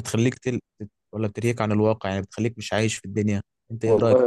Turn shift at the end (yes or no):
yes